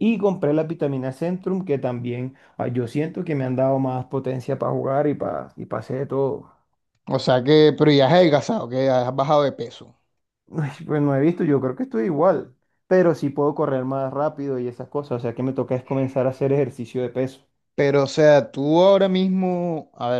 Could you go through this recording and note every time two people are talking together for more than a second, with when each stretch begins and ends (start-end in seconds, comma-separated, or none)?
none